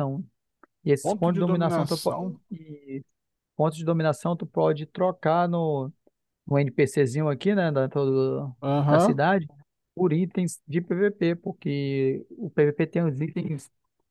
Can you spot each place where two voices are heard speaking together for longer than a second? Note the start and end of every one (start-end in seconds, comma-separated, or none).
1.0-2.3